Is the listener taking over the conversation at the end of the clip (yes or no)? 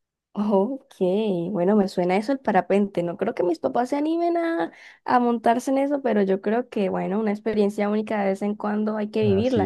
yes